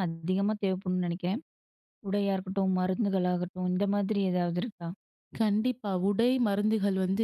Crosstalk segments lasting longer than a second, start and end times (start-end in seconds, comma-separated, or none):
none